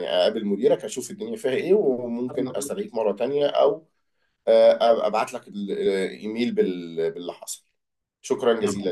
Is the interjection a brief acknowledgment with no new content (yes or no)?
no